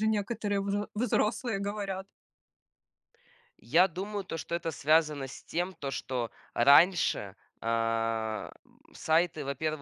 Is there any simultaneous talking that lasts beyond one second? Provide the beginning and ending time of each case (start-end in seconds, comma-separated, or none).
none